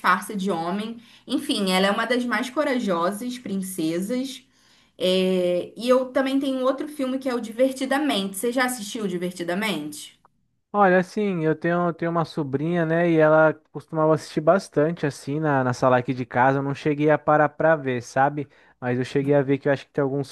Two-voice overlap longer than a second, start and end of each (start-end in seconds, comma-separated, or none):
none